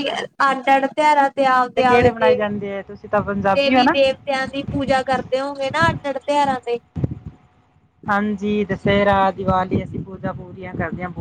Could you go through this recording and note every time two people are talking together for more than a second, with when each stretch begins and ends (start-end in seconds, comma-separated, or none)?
none